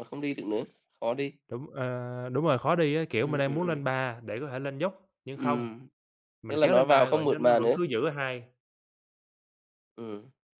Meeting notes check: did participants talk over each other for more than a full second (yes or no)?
yes